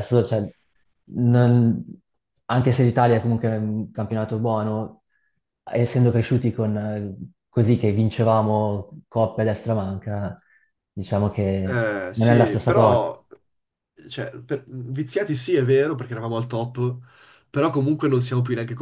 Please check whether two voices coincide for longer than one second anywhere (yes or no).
yes